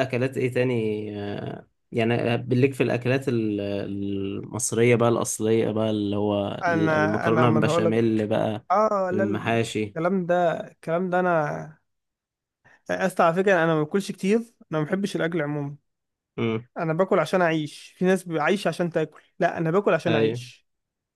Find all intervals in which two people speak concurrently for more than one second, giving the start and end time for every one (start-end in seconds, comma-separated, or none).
6.6-7.9